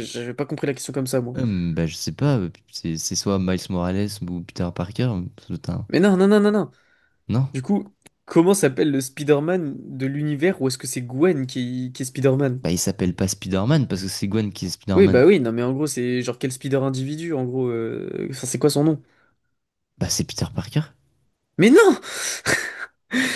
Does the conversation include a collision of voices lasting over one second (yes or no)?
no